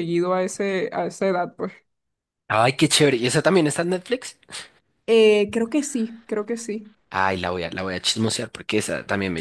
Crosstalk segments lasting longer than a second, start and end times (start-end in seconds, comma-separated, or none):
none